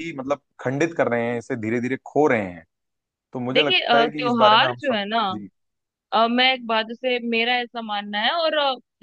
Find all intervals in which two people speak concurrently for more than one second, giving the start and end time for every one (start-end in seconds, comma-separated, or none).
3.5-5.2